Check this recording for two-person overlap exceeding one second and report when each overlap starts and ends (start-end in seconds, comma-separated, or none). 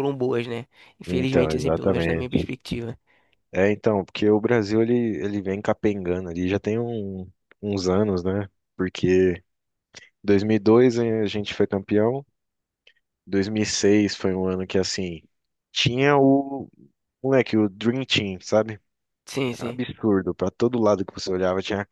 1.1-2.5